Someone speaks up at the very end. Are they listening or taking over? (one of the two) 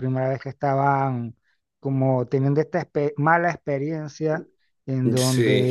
listening